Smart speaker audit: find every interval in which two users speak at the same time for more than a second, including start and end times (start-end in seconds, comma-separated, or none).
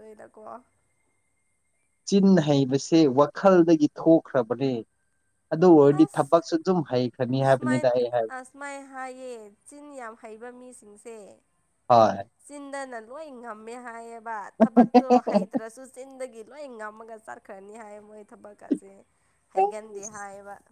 none